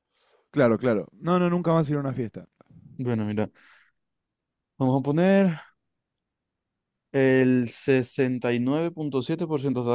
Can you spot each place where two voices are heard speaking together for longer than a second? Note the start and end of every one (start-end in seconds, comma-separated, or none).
none